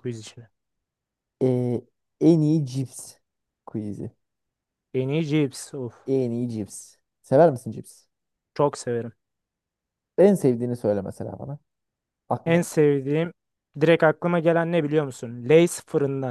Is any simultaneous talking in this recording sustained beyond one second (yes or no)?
no